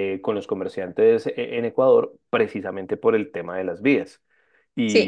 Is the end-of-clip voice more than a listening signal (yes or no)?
yes